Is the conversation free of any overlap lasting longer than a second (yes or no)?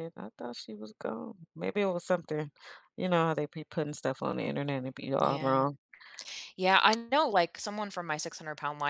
yes